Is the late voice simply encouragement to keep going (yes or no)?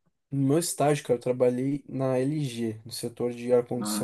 no